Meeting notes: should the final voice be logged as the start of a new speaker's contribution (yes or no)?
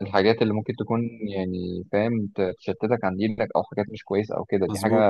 no